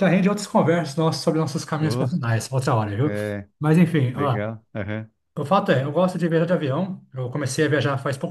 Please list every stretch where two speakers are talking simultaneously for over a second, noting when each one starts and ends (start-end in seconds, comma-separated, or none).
none